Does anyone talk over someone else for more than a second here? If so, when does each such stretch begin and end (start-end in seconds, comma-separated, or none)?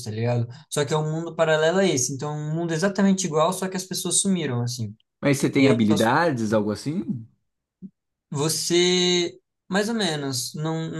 none